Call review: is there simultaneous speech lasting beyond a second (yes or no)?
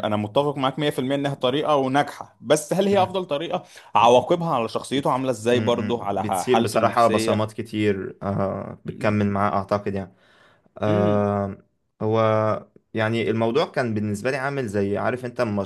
yes